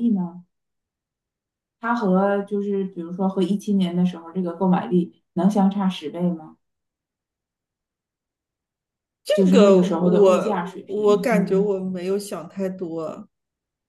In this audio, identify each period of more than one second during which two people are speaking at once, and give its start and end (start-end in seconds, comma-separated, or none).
9.3-11.7